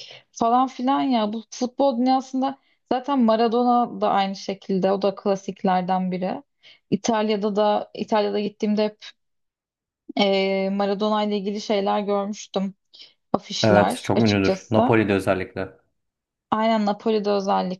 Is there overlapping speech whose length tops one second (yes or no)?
yes